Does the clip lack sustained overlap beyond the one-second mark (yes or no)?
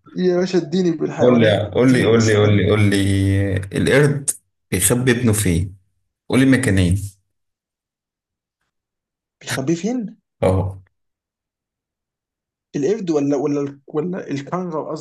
no